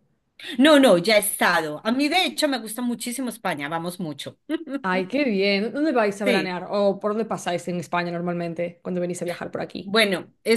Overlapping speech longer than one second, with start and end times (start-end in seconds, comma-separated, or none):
none